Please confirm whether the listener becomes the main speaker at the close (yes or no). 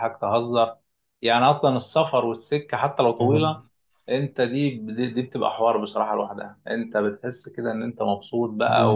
no